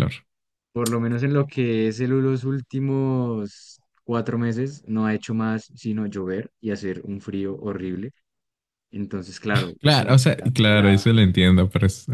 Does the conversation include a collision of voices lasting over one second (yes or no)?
yes